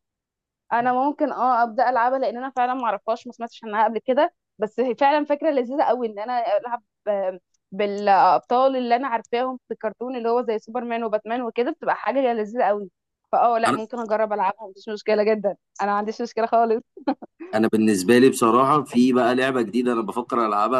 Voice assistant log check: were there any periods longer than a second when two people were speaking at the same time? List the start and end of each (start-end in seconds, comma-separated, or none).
none